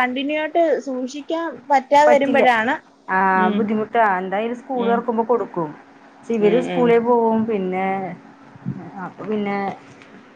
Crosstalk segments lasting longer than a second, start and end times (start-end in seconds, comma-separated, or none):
none